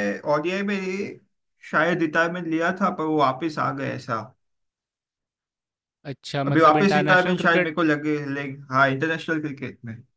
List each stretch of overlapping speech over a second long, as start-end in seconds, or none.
6.5-7.7